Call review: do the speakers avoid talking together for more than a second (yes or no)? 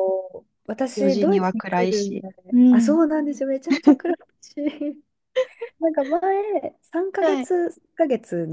no